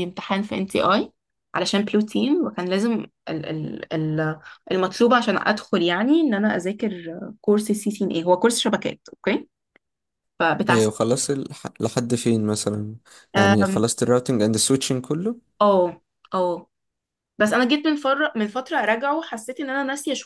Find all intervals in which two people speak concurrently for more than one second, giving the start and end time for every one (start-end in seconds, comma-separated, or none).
none